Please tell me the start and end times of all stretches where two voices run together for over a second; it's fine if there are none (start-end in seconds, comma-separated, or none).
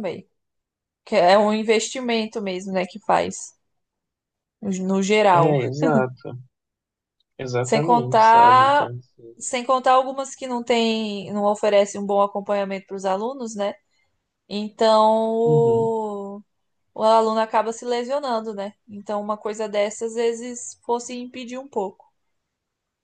7.6-8.9